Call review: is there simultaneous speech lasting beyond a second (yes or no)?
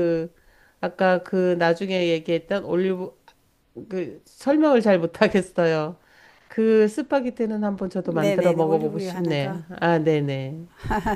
yes